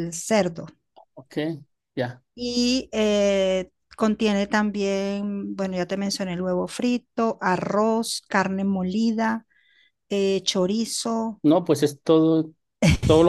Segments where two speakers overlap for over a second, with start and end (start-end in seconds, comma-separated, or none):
none